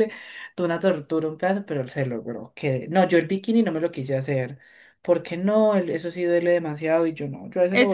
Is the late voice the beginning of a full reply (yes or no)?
yes